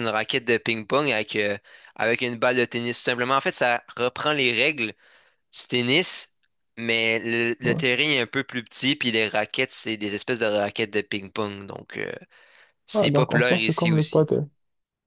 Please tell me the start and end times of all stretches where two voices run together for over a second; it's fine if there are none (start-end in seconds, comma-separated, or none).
12.9-14.3